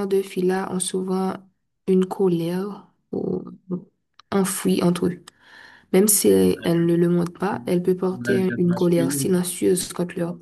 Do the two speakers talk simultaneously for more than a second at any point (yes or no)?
yes